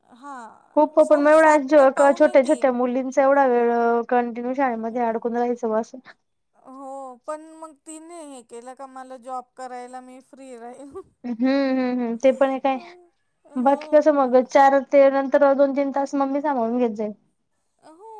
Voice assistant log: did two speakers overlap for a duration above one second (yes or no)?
yes